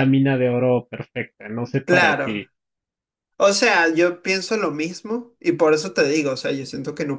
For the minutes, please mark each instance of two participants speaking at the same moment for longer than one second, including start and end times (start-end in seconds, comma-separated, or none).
none